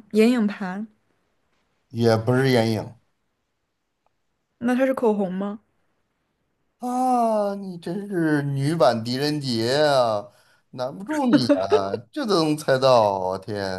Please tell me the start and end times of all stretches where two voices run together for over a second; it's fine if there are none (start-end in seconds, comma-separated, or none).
none